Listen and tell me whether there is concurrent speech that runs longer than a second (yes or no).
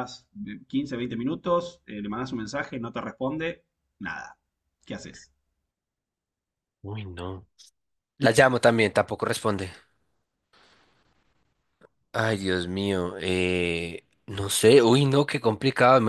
no